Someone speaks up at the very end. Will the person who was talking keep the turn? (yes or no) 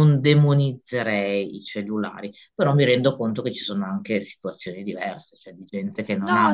yes